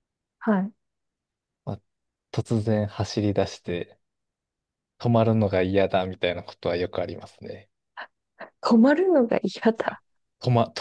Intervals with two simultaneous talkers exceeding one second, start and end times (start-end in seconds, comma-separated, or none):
none